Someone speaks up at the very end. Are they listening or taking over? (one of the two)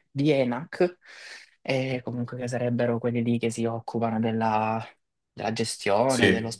listening